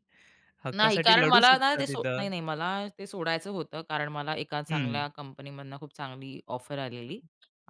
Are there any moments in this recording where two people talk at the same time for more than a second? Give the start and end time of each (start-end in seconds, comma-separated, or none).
0.8-2.2